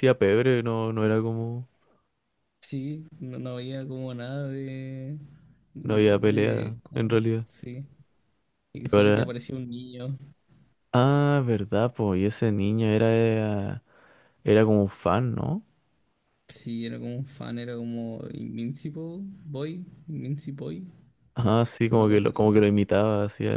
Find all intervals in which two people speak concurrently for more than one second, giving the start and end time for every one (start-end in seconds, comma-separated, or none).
5.8-7.5